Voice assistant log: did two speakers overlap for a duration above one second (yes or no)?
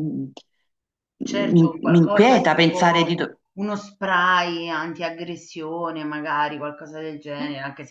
yes